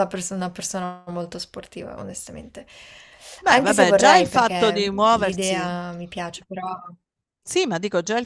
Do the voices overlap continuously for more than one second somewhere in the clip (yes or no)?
yes